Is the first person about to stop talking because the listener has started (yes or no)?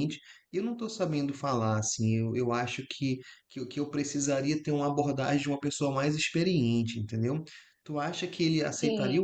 no